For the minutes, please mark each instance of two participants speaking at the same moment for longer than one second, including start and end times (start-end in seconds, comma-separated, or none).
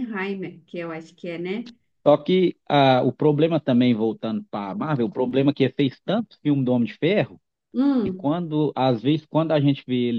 none